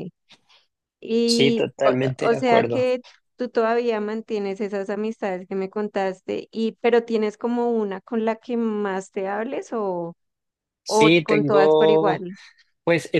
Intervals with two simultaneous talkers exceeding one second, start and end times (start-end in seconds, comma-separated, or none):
1.2-2.9, 10.9-12.2